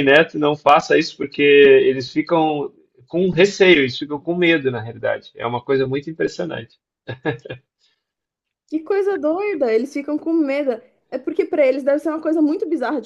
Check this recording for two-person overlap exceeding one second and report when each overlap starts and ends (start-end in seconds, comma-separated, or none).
none